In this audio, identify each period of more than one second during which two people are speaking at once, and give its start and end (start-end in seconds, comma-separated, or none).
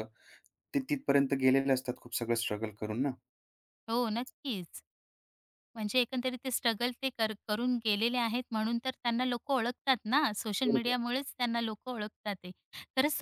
none